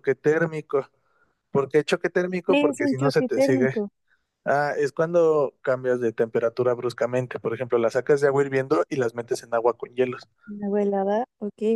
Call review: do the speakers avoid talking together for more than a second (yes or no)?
no